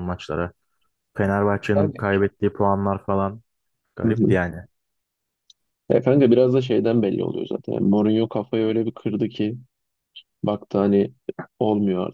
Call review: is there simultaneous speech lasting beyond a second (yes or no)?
no